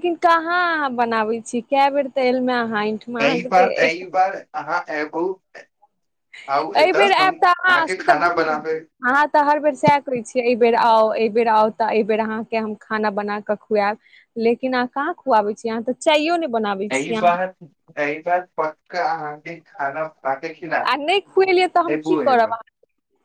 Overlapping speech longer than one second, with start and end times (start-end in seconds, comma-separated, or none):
6.8-8.6